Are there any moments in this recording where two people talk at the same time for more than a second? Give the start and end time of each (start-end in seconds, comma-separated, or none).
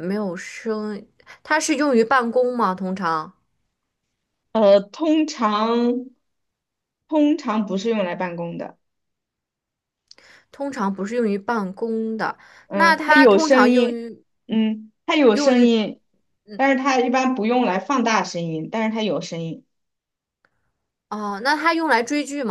12.7-14.0